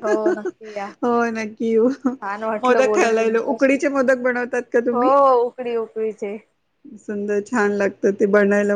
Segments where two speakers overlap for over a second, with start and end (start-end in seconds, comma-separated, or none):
2.6-3.8